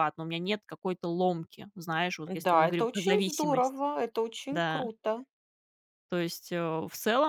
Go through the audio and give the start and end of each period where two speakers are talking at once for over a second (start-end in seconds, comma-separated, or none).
2.4-3.8